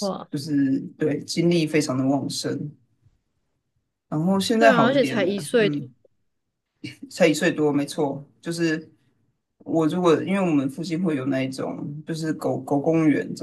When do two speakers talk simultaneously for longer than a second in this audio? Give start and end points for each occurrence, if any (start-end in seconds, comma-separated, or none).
4.5-5.8